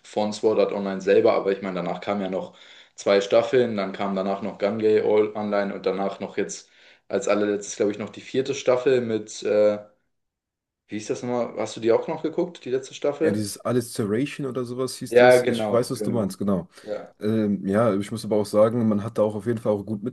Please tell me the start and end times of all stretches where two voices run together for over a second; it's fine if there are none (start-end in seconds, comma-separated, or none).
15.1-16.3